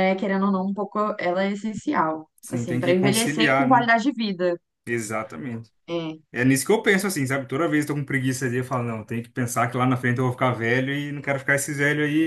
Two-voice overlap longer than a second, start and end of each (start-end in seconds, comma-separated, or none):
2.4-3.9